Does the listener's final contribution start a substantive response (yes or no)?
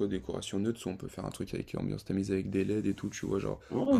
no